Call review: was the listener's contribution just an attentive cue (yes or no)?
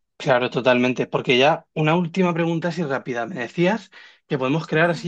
yes